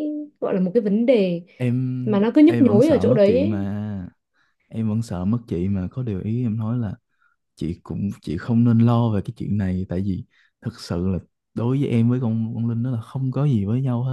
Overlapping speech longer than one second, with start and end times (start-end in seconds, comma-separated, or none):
2.0-3.6